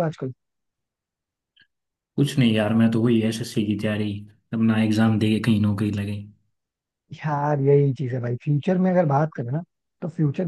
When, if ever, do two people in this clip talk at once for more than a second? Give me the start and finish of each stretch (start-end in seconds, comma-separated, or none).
none